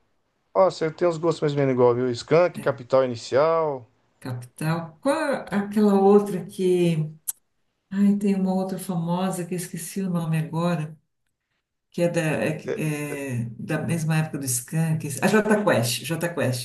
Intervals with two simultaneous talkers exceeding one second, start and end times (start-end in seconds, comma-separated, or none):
none